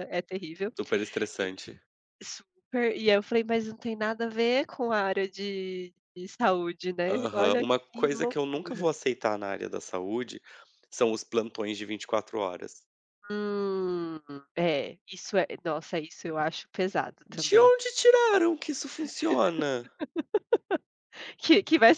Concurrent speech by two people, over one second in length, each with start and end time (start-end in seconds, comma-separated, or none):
7.1-8.9